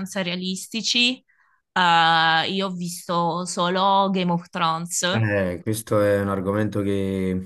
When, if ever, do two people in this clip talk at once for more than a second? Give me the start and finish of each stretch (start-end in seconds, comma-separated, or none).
none